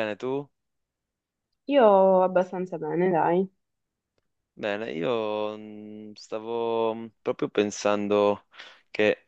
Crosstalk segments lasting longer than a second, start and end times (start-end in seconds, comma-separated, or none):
none